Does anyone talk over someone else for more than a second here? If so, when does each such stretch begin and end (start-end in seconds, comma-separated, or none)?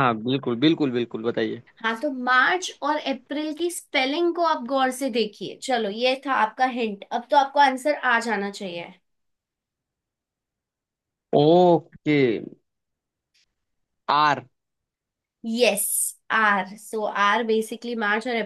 none